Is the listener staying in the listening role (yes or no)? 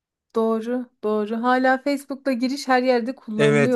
no